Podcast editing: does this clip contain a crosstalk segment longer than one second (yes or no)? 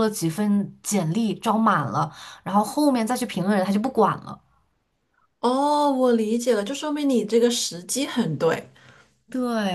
no